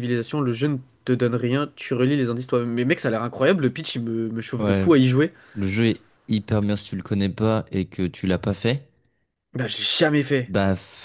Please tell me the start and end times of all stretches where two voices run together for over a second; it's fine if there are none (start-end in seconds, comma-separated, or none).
none